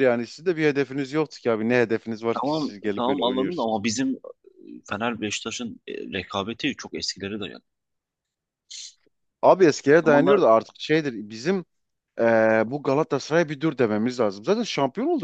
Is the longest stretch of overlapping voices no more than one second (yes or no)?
no